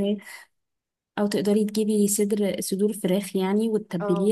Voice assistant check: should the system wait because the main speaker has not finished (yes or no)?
yes